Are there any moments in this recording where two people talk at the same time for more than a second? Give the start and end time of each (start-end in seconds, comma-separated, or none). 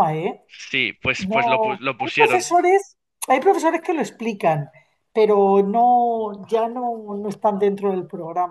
1.2-2.6